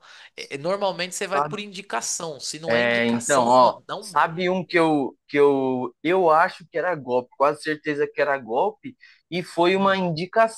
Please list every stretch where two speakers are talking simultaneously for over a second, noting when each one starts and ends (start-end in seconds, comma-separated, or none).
2.7-4.7